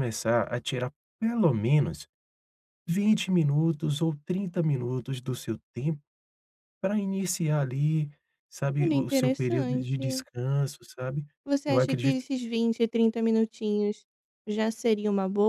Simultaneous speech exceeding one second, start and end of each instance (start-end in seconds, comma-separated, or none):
8.8-10.2